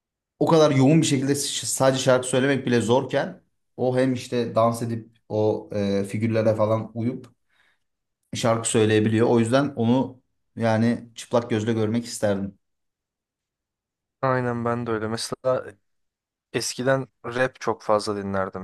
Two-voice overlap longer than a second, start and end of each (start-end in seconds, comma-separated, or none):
none